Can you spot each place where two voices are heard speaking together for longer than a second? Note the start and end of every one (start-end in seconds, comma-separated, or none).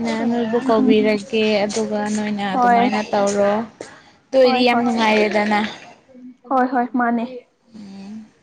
none